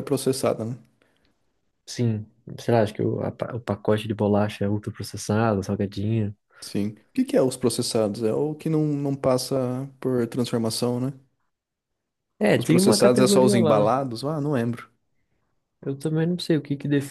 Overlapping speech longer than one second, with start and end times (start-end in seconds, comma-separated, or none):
12.5-13.9